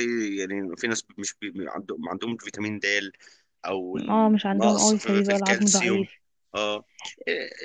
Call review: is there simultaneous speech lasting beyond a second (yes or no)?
yes